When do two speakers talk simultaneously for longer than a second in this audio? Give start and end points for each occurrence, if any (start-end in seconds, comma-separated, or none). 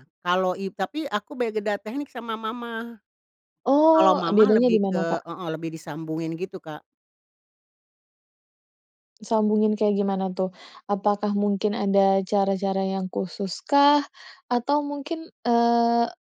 3.9-5.2